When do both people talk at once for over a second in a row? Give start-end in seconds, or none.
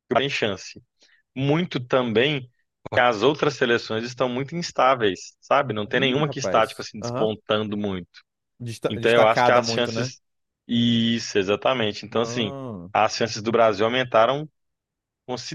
5.9-7.3, 8.9-10.1